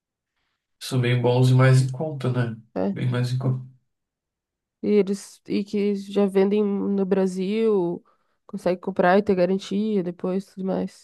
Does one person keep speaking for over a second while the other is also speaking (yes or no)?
no